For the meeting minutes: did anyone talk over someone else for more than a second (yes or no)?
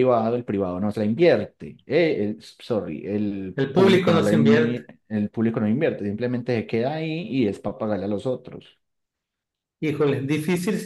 yes